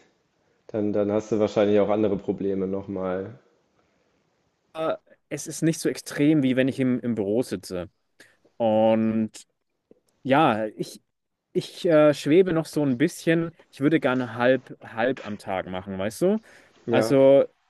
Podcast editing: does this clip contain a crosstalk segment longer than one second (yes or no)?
no